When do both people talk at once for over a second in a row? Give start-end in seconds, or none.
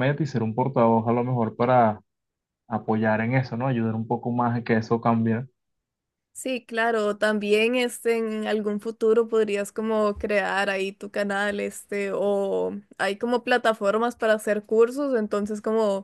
none